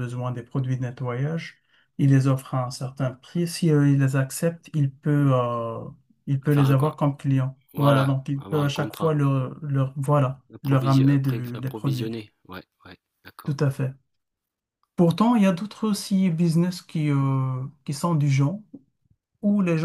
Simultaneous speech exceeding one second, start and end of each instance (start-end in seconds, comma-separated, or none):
7.7-9.1, 10.5-12.1